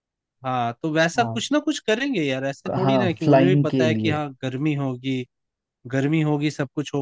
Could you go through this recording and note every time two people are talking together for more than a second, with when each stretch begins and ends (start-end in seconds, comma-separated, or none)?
2.7-4.2